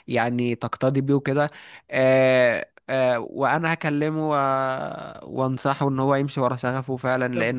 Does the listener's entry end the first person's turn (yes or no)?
no